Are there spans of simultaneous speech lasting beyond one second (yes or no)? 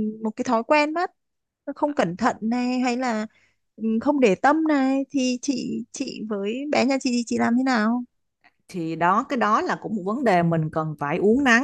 no